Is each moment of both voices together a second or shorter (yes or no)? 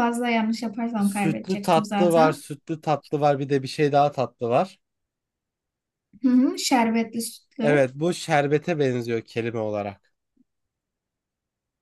no